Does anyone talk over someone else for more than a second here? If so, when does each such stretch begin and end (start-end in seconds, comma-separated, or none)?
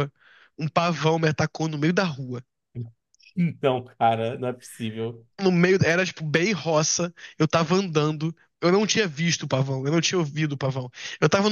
none